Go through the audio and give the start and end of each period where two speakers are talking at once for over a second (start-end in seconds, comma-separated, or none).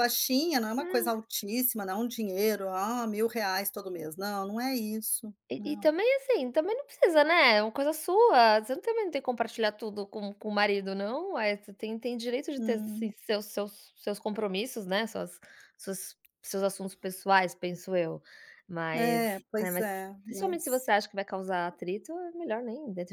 18.9-20.9